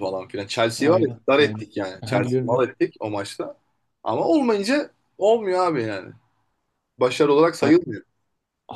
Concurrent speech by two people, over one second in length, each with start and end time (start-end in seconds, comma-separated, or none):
0.8-2.7